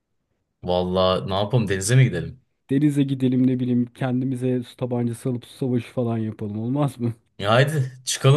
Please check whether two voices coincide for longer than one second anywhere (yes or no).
no